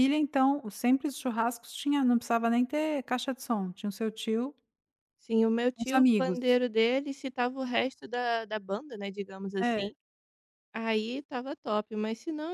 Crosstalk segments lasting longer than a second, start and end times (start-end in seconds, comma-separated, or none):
none